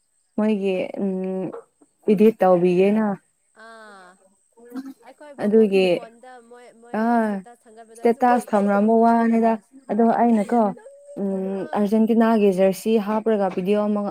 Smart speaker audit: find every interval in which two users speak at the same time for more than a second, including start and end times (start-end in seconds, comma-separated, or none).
none